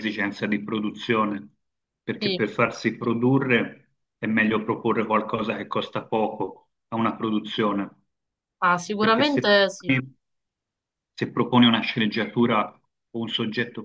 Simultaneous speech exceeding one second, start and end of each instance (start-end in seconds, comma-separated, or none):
none